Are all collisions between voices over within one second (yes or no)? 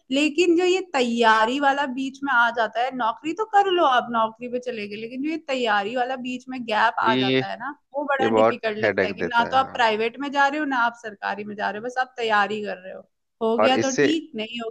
no